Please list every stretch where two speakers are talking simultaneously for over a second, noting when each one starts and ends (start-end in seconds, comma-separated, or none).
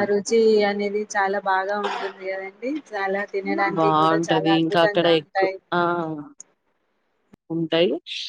3.8-5.5